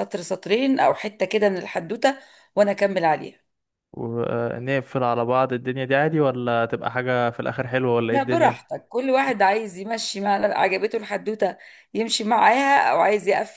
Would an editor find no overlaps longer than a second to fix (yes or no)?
yes